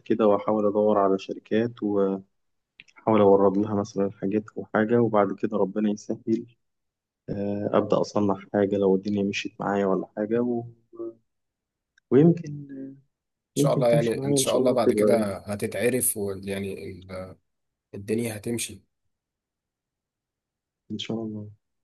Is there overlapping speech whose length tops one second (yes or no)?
yes